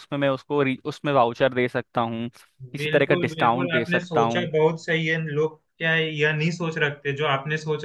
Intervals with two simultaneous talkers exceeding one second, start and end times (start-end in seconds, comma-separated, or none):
2.8-4.5